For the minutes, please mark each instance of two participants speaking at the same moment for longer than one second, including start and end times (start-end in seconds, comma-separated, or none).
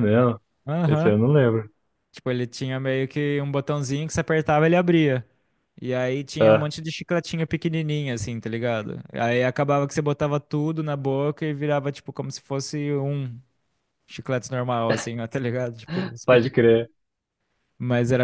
none